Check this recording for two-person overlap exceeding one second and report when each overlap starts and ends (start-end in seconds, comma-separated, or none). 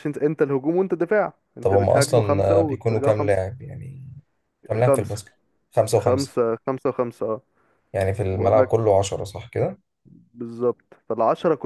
1.6-3.4